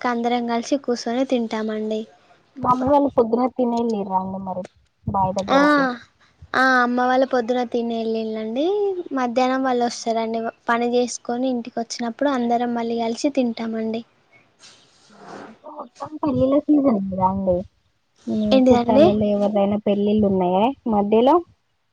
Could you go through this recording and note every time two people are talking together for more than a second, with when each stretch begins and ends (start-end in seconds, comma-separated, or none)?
none